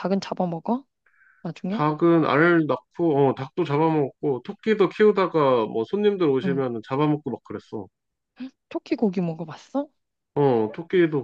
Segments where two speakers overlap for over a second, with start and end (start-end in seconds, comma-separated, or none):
none